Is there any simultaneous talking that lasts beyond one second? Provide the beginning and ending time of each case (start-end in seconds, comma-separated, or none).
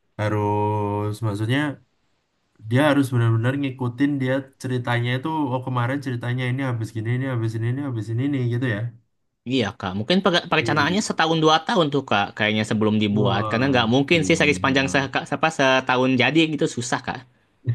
13.1-15.1